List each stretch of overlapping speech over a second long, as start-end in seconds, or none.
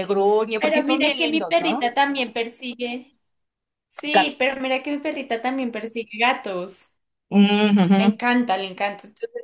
0.6-1.8